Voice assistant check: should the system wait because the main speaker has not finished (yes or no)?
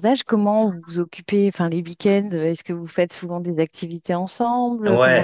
no